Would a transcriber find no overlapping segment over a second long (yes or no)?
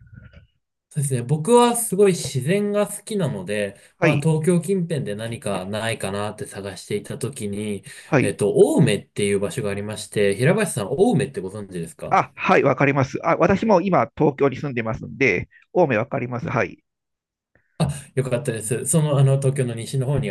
yes